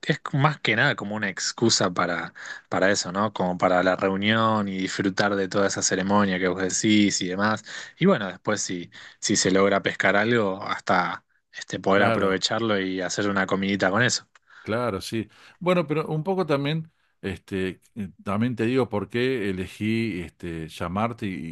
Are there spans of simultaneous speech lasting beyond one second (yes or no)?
no